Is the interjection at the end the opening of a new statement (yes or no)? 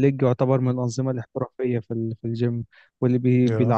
no